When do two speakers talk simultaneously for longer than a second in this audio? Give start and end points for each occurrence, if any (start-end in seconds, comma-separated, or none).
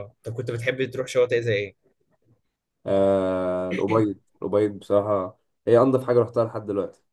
none